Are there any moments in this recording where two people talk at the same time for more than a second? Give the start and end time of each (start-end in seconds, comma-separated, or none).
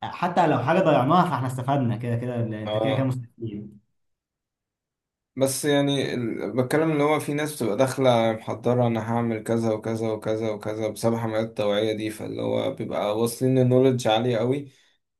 none